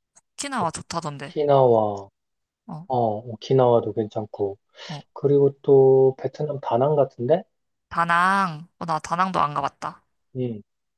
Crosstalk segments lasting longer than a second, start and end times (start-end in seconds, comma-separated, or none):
none